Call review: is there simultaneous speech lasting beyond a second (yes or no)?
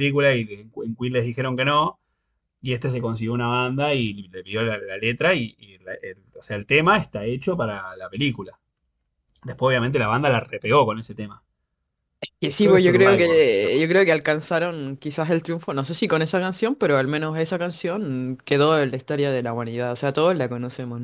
yes